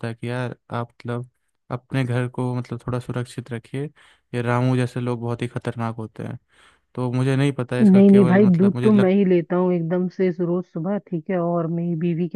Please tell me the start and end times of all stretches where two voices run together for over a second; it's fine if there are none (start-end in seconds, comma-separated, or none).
7.8-9.1